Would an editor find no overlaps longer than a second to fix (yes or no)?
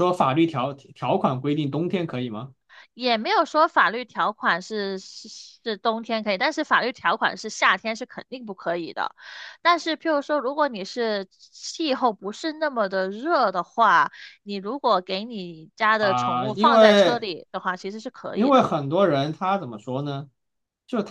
no